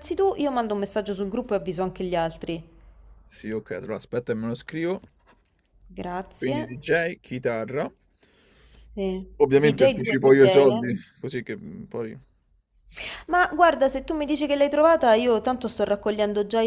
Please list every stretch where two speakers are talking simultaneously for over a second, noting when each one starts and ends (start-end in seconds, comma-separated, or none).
9.4-10.8